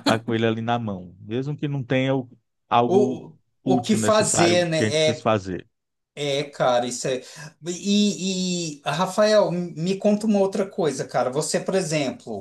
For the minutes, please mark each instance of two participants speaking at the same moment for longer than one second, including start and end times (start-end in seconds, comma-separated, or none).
2.9-5.4